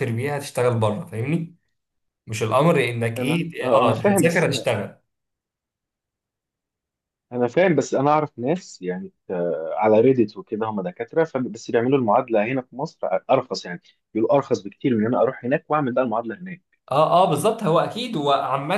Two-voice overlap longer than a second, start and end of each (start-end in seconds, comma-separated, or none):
3.2-4.4